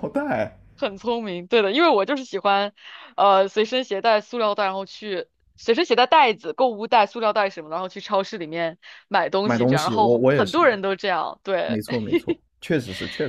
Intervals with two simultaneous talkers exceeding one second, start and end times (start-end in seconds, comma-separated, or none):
9.4-10.6